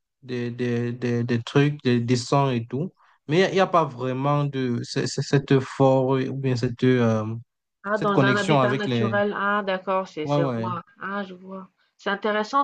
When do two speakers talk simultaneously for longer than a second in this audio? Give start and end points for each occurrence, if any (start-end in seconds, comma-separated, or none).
7.9-9.1